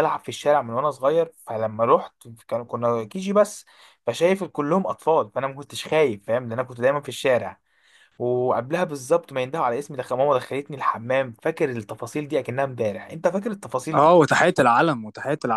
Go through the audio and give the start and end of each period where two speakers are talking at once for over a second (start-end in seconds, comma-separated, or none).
none